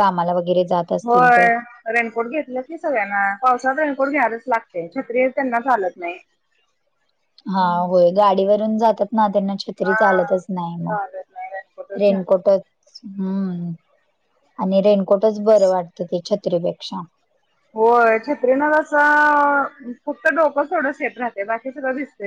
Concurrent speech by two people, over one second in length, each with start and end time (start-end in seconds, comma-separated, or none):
10.9-12.4